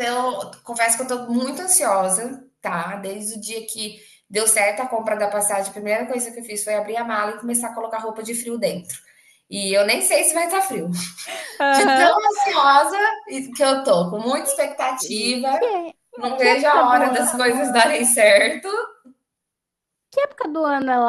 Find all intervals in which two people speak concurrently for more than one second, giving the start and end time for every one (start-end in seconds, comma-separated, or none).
16.4-17.7